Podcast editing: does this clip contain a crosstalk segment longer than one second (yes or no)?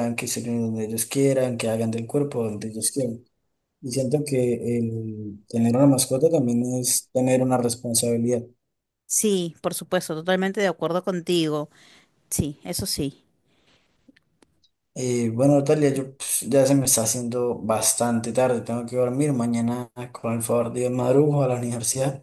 no